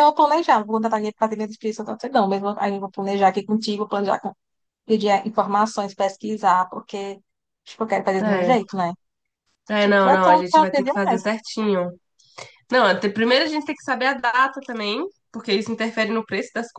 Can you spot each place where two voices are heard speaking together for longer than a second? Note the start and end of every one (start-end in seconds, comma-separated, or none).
9.8-11.2